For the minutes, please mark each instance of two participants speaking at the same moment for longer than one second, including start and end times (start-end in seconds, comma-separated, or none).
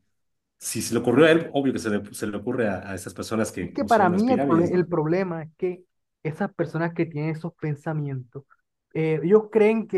3.6-4.9